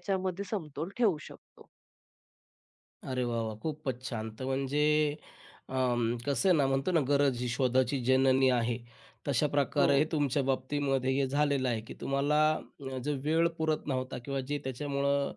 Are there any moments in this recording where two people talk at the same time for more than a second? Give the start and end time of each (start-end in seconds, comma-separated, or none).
none